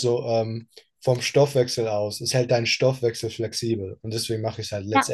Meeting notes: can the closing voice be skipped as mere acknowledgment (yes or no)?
no